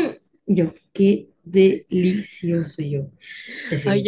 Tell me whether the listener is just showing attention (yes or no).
no